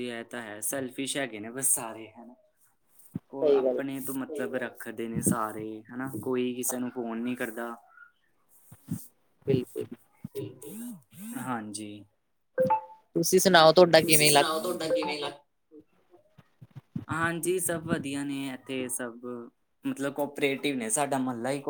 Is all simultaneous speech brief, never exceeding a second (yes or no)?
no